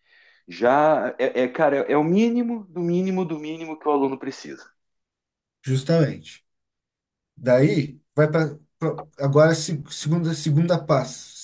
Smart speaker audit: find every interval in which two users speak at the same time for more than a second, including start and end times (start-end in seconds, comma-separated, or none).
none